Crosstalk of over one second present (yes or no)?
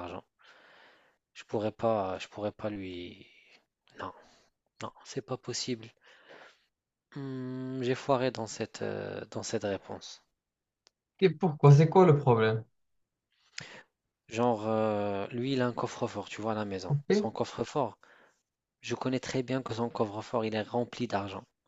no